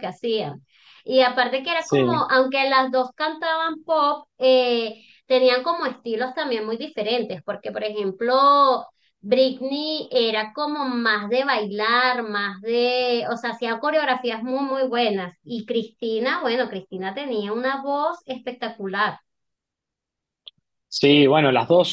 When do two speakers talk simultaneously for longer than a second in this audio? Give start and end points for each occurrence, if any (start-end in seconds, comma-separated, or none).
none